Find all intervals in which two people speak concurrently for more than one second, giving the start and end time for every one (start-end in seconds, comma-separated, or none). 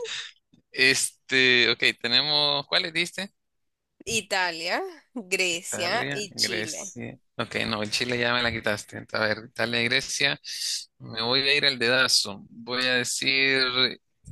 5.5-6.9